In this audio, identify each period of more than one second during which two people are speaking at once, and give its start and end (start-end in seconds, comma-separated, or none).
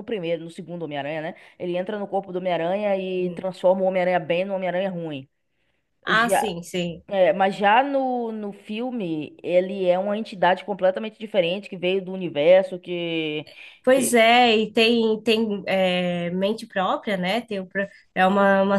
none